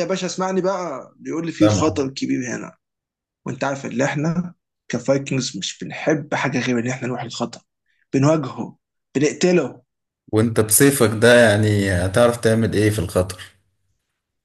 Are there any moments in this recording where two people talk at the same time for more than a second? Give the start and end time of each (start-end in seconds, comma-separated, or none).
none